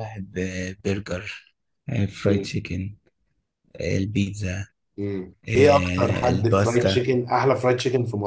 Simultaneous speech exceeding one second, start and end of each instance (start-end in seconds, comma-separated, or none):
5.5-7.0